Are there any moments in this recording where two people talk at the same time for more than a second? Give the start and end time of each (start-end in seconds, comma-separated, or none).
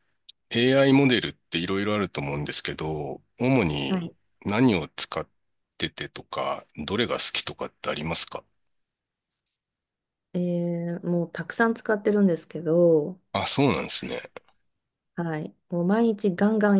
none